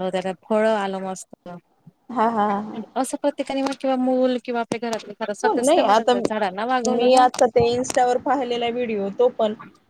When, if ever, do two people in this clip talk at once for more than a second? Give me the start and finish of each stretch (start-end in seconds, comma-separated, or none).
5.4-7.3